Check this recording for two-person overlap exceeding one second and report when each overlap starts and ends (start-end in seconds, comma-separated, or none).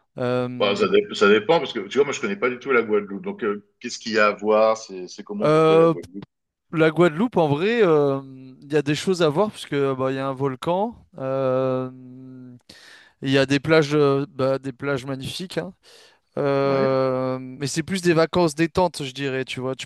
none